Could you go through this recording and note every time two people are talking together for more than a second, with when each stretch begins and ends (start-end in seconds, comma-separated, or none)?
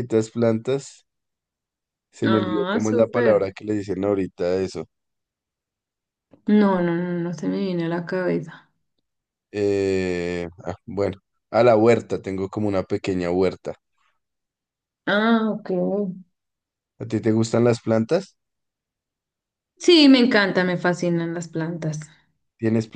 2.2-3.5